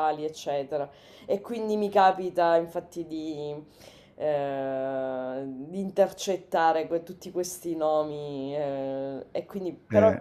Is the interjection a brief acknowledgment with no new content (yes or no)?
yes